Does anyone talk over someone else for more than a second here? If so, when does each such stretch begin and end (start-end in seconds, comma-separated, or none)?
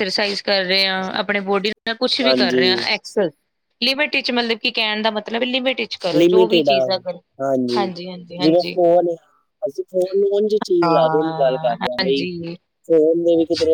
10.8-12.2